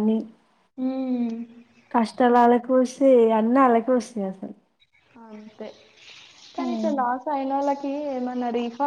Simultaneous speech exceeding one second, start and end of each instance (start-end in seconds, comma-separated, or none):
none